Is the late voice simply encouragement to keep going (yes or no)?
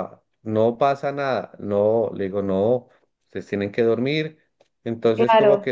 yes